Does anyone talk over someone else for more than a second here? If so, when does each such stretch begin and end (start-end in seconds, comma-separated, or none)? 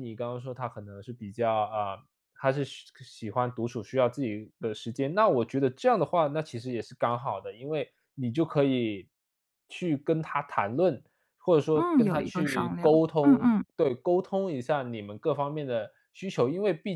11.7-13.6